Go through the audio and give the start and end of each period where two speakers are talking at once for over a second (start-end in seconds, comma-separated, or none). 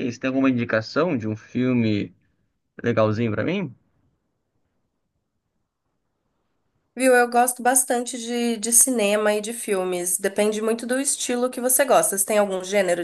none